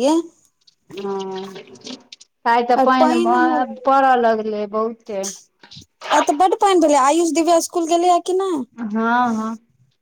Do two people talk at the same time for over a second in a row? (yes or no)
no